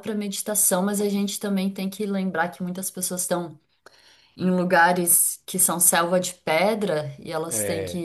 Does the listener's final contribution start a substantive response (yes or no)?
no